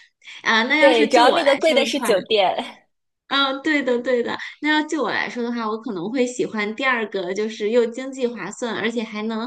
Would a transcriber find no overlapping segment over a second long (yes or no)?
no